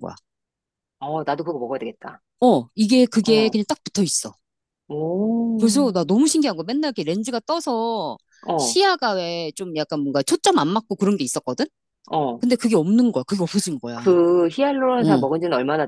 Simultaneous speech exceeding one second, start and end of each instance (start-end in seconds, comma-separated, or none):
none